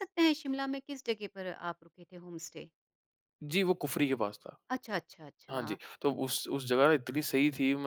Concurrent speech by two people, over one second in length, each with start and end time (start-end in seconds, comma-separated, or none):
none